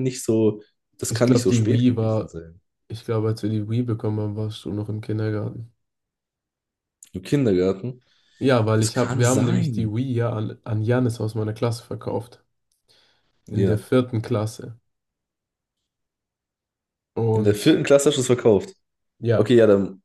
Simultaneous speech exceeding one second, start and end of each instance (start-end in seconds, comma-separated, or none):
1.1-2.3, 8.8-10.0